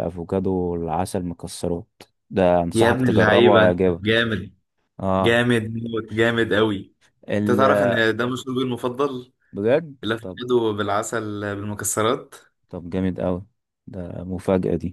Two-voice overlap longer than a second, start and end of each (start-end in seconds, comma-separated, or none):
2.7-4.2